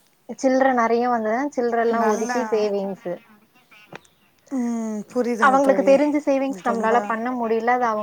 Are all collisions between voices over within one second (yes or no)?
yes